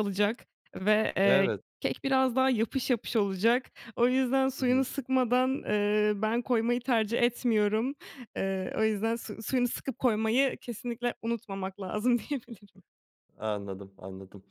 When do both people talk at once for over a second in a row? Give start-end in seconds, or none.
none